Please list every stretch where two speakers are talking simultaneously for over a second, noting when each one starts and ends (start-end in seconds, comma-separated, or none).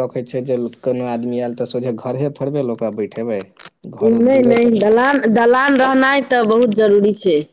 none